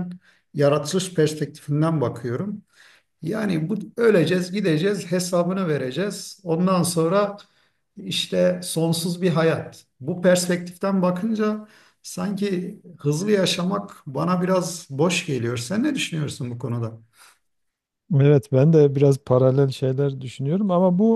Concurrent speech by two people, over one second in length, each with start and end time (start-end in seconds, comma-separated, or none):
none